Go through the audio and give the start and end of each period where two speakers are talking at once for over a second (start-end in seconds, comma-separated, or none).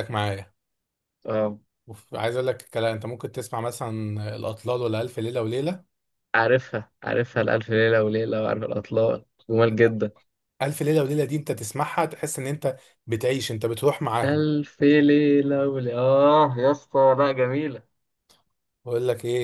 none